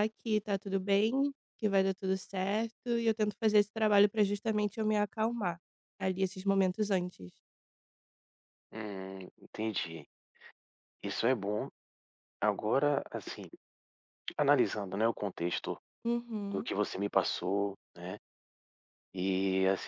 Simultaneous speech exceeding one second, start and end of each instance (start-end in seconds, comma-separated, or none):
none